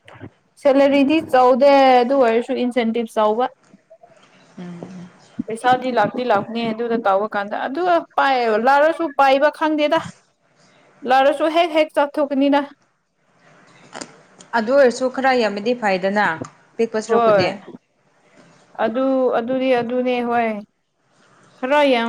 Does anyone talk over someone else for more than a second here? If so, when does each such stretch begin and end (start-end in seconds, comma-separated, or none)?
none